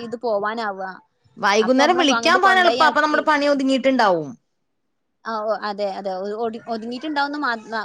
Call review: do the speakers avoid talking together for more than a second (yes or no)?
no